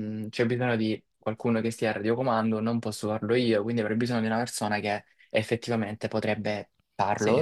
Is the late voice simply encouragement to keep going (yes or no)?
yes